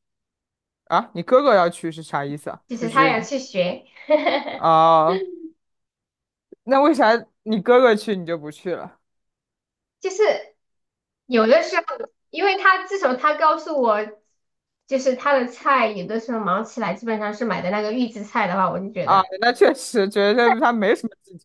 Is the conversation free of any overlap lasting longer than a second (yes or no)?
yes